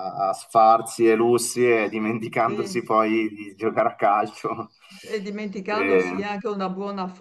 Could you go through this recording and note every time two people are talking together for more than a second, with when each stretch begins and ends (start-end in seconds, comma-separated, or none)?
none